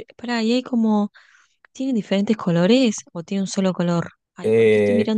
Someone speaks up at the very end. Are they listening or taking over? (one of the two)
taking over